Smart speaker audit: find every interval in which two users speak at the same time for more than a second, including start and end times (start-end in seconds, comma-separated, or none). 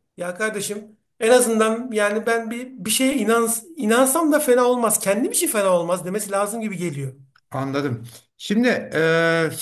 none